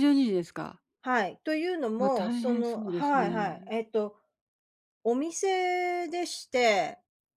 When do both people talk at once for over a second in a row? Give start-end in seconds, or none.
2.0-3.7